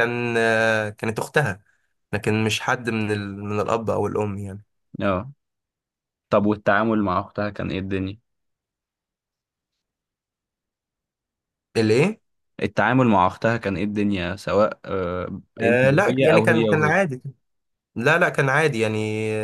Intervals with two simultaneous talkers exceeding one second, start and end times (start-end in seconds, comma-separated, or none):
15.6-16.9